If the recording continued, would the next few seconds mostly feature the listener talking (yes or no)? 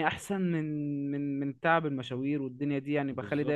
no